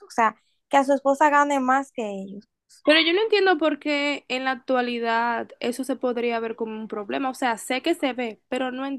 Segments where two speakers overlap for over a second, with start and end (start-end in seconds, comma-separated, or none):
none